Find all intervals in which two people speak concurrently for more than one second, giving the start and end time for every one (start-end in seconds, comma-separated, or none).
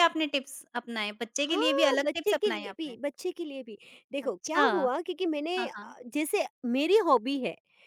1.5-3.0